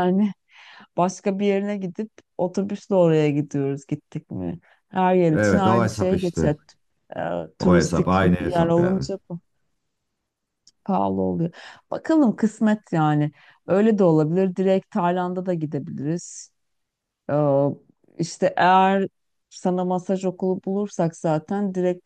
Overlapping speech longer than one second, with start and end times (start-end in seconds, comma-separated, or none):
5.3-6.5, 7.6-9.1